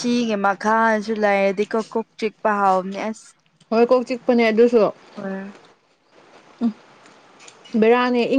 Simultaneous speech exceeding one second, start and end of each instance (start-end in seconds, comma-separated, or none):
none